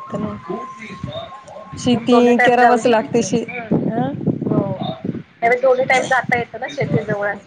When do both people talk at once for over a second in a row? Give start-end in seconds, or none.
1.9-3.3